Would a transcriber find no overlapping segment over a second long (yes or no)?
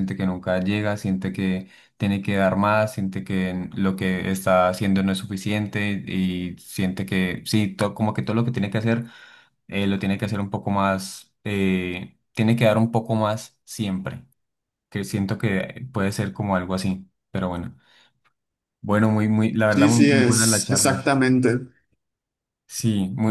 no